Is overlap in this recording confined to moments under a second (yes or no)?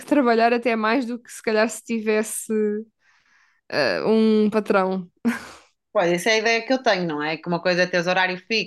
yes